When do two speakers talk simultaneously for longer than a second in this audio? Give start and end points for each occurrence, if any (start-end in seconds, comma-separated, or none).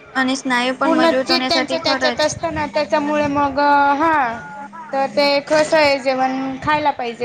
0.8-2.3